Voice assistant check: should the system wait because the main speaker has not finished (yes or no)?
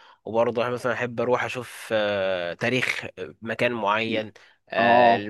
yes